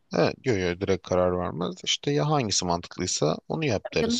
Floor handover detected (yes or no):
yes